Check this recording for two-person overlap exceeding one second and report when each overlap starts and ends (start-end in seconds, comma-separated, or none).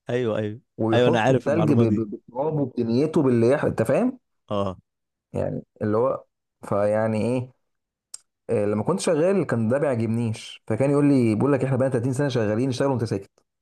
0.8-2.0